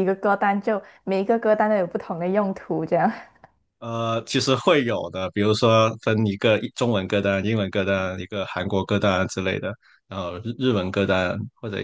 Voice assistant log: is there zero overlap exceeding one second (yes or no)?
yes